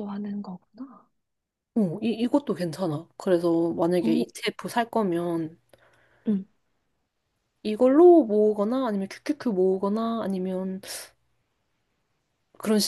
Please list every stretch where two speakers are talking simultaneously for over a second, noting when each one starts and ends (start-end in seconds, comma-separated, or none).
none